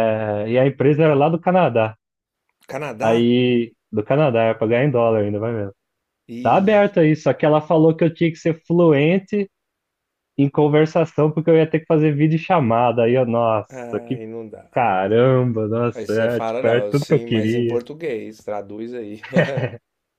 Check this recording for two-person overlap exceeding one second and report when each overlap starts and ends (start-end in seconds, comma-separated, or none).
15.9-17.8